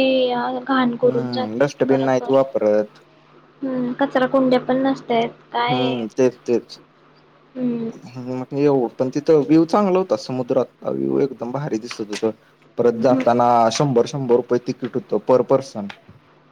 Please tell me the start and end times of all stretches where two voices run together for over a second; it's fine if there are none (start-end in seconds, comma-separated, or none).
1.1-2.4